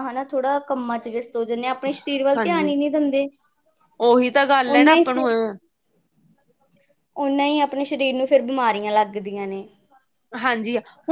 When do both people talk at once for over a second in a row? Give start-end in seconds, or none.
none